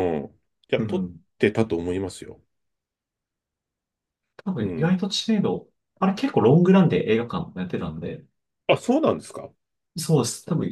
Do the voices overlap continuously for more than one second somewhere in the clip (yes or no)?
no